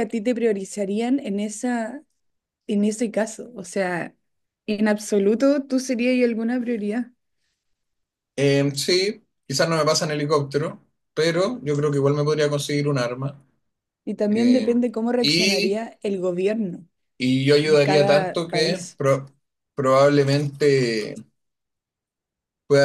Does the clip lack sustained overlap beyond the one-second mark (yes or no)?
no